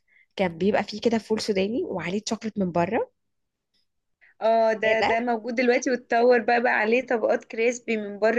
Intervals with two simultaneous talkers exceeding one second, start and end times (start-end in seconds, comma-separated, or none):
none